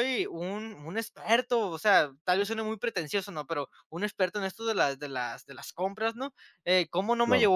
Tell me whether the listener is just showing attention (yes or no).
yes